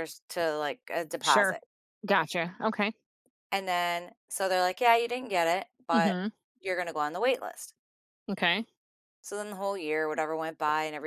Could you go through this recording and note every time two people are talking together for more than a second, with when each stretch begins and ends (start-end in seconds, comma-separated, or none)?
none